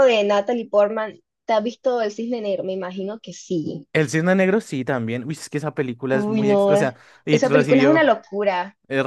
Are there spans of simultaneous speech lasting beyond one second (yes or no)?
yes